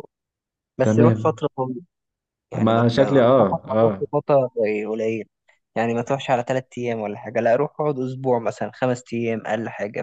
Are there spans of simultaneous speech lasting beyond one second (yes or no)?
yes